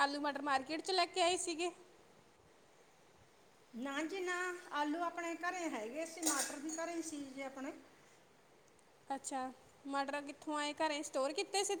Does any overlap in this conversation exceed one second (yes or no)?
no